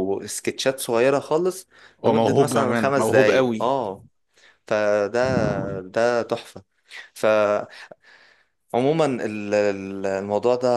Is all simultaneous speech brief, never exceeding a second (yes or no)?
no